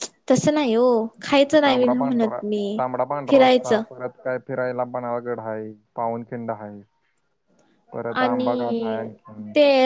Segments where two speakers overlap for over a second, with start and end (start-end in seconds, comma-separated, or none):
none